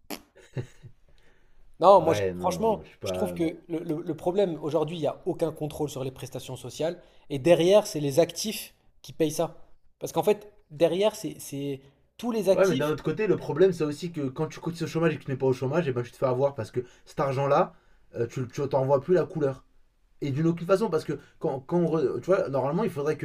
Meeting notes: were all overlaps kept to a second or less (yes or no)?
no